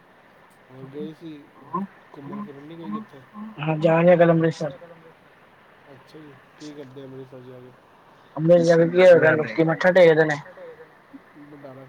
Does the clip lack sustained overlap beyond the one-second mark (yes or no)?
no